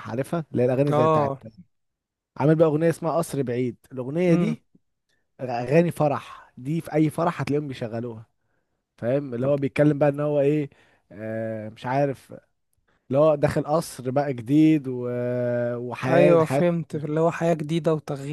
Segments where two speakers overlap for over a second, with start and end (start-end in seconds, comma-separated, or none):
none